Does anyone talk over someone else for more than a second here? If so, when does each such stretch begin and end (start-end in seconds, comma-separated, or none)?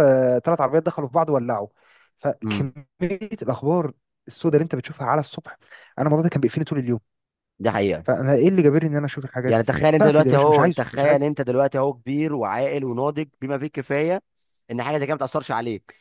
9.5-11.2